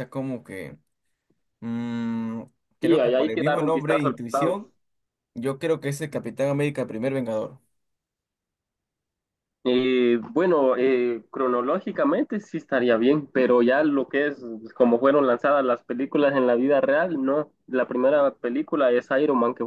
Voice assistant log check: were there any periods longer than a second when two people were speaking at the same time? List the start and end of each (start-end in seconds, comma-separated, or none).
2.8-4.7